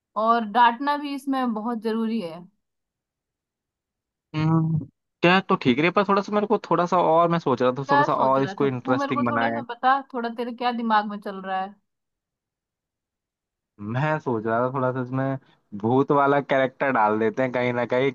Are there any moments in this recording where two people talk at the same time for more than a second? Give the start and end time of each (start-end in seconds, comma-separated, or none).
7.9-9.2